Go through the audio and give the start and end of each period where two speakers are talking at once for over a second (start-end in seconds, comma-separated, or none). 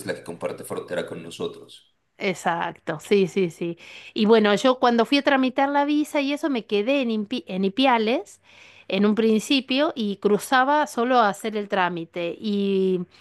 none